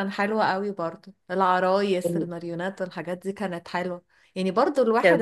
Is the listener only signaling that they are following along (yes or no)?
yes